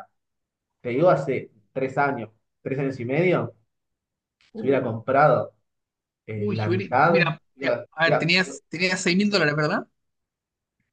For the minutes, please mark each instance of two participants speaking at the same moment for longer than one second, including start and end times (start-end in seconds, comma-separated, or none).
6.3-8.3